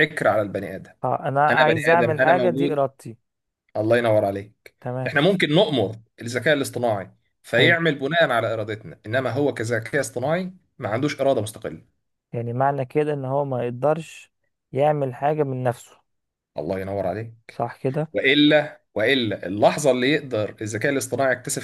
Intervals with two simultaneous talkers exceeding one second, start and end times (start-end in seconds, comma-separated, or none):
1.5-2.8